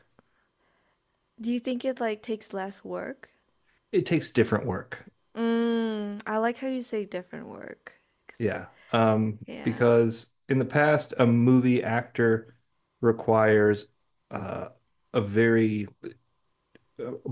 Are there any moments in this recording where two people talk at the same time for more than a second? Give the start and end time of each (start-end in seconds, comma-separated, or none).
none